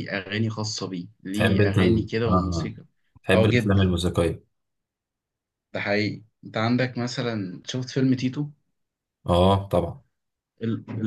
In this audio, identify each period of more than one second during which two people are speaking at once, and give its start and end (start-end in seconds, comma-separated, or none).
1.3-2.7